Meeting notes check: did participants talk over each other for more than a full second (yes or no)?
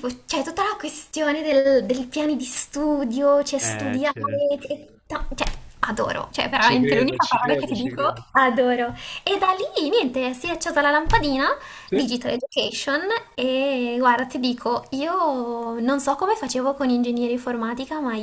yes